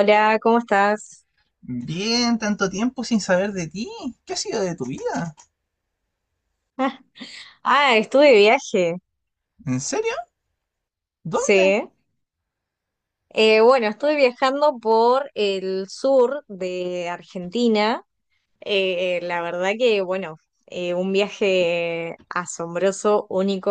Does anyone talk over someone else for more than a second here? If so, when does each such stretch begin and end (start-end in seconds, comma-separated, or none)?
none